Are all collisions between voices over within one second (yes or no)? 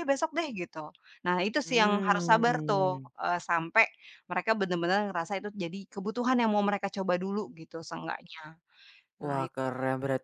no